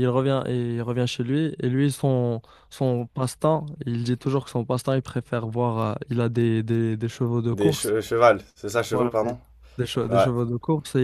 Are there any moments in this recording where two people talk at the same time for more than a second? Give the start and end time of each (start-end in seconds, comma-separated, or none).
none